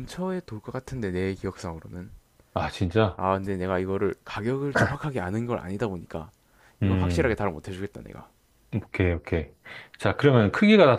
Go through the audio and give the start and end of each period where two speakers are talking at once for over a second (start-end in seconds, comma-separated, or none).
none